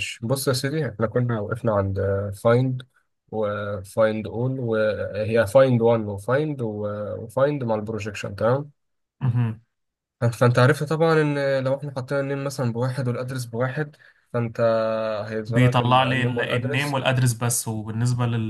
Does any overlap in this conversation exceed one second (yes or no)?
yes